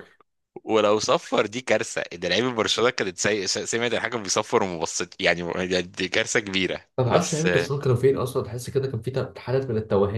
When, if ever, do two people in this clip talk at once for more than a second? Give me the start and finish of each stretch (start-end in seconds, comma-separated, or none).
none